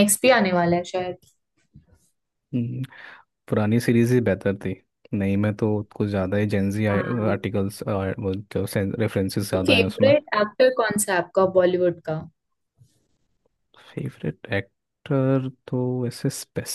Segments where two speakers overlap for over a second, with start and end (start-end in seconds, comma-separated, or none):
none